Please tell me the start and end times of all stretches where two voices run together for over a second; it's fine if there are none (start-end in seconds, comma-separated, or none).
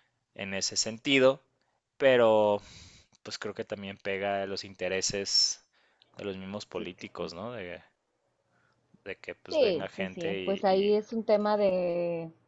9.5-11.0